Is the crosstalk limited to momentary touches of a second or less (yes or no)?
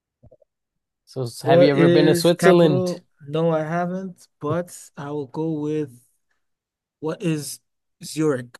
no